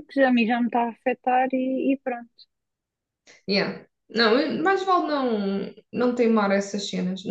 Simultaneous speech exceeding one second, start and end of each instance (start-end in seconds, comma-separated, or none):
none